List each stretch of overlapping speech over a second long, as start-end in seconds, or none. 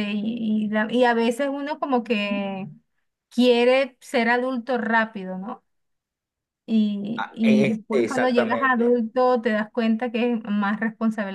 7.4-9.0